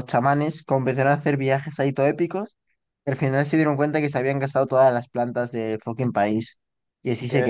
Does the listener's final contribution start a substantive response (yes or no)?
yes